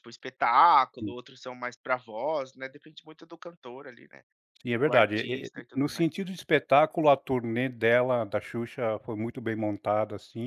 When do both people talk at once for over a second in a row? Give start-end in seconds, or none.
4.8-6.1